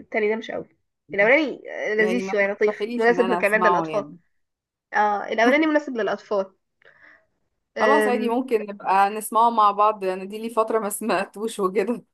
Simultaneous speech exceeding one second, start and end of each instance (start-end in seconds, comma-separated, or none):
2.0-4.0